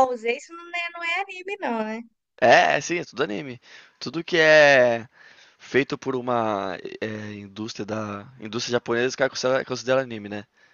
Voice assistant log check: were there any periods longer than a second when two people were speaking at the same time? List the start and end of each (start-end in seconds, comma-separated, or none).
none